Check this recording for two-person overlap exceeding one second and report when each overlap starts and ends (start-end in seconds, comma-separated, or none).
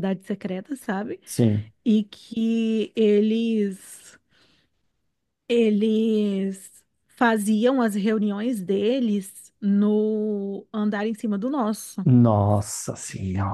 none